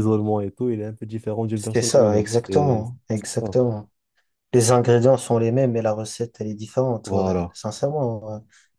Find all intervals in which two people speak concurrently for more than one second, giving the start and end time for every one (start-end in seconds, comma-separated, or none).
1.5-3.5